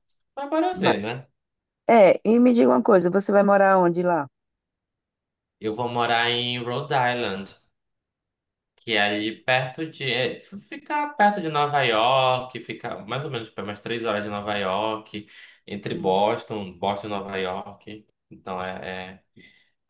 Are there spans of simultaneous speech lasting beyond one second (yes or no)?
no